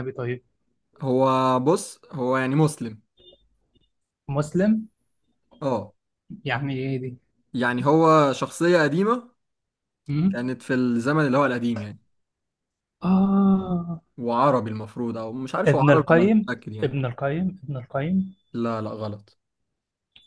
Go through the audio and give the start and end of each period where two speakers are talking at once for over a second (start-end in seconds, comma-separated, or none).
15.6-16.9